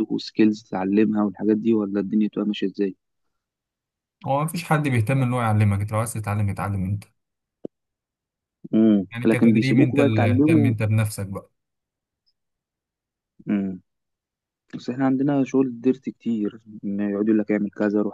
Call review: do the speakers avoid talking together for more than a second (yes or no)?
no